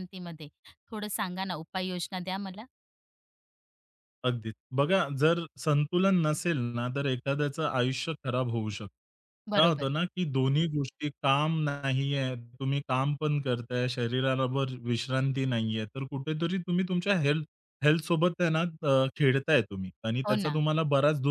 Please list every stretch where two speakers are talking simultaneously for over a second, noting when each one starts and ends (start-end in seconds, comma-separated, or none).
none